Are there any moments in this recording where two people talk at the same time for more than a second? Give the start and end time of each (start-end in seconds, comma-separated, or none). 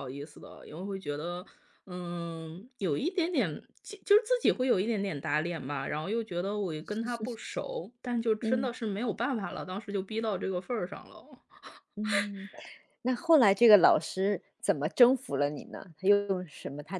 none